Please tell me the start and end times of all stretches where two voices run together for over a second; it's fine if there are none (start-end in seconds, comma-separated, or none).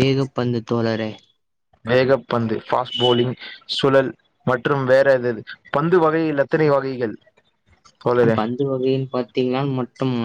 none